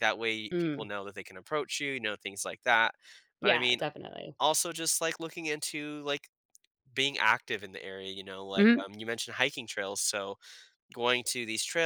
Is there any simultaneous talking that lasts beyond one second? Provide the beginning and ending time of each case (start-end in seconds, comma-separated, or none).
none